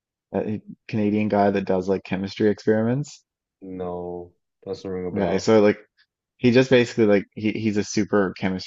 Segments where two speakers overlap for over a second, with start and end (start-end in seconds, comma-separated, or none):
none